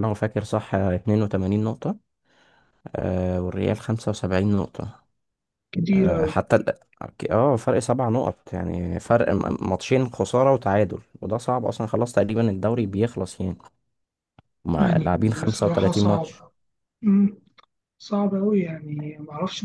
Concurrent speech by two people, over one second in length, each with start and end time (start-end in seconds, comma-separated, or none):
14.8-16.4